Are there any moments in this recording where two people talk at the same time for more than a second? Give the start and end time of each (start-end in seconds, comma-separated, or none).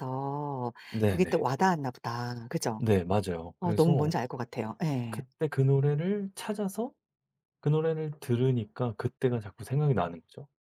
none